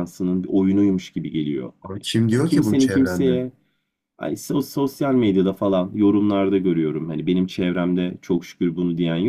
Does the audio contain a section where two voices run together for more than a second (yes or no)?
yes